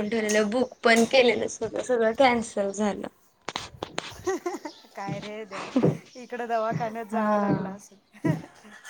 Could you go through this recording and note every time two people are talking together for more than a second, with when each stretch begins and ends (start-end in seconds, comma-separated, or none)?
none